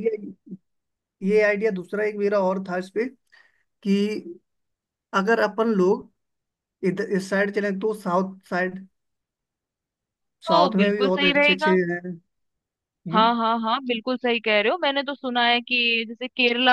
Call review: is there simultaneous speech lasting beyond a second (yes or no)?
yes